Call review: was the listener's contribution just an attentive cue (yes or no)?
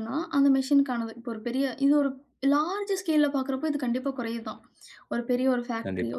yes